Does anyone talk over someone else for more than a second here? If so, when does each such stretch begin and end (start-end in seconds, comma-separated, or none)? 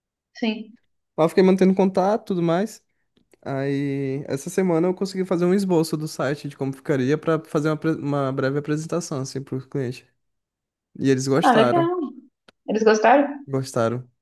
none